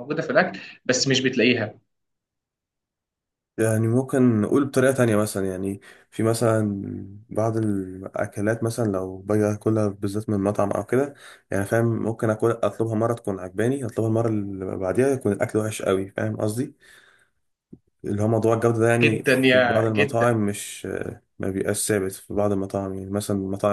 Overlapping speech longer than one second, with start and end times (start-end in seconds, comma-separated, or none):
19.0-20.3